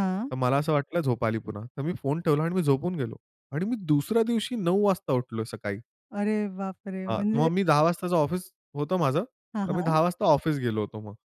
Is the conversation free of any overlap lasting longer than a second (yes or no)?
yes